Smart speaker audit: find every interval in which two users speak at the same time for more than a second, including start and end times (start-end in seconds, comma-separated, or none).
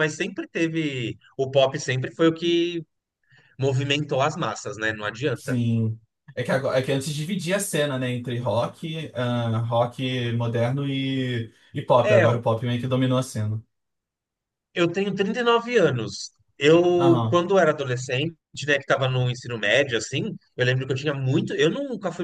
none